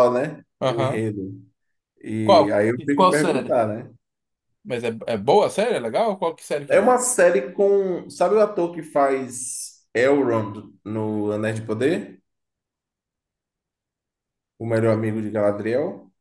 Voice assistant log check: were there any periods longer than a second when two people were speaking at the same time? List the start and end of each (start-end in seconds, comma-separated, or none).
2.2-3.6